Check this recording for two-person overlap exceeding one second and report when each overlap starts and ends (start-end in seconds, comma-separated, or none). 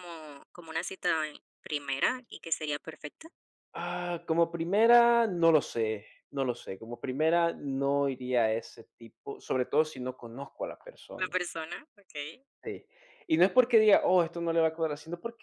none